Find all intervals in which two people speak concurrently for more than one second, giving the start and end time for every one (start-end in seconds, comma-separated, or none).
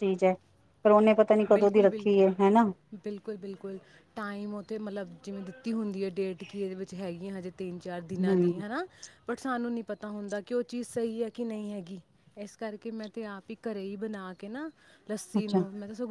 1.5-2.7